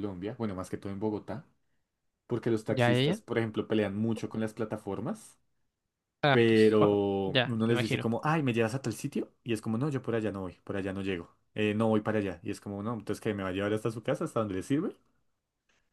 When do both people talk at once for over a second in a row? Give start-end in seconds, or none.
6.3-8.1